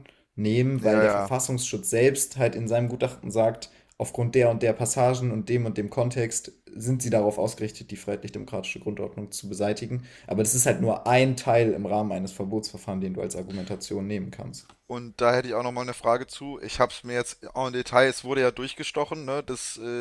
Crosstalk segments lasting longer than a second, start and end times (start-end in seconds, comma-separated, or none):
none